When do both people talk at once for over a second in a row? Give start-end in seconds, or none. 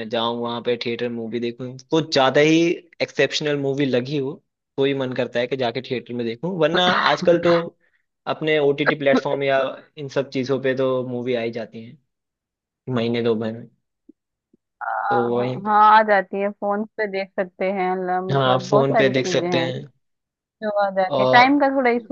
18.3-19.7